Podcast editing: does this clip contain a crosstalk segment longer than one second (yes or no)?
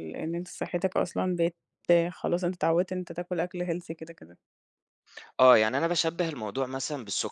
no